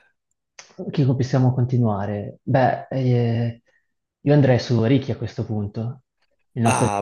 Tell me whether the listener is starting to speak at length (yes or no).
yes